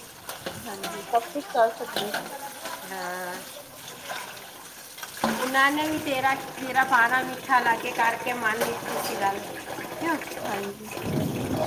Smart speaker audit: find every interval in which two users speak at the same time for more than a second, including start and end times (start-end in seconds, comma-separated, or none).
none